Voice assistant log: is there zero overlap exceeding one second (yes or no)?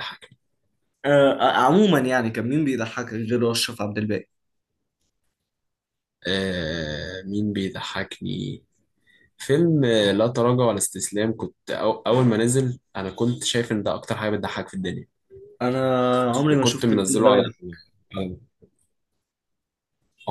no